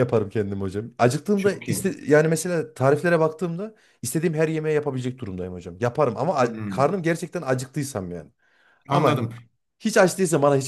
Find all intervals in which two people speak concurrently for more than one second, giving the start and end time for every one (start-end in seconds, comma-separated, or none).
none